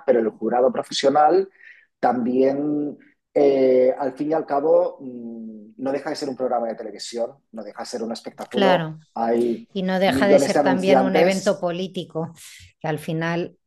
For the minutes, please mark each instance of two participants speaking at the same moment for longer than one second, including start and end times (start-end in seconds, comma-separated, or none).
10.1-11.7